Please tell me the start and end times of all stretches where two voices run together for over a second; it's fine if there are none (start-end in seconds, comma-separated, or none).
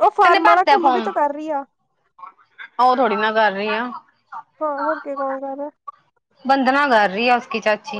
none